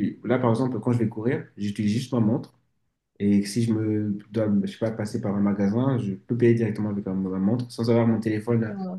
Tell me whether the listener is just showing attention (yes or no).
yes